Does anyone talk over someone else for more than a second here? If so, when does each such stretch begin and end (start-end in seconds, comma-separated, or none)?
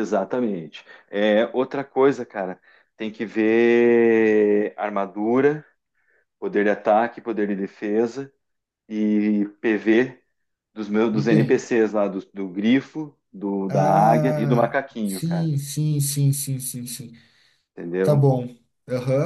13.7-15.5